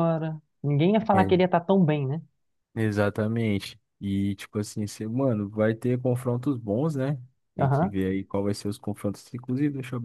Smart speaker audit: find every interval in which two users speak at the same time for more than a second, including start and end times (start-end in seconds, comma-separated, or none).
none